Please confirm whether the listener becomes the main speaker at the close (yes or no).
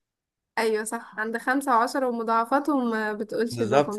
yes